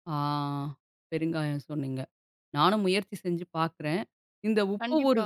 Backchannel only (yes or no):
yes